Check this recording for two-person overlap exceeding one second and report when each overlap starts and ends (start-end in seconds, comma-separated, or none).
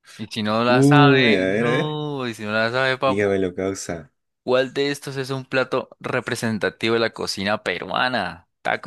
0.7-2.0